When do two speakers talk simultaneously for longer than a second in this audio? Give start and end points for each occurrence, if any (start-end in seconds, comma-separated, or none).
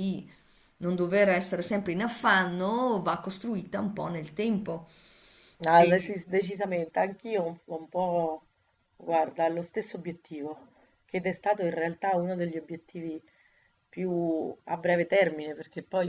none